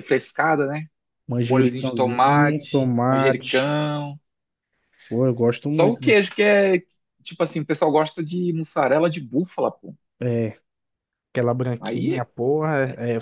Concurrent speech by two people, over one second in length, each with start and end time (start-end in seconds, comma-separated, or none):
1.4-3.8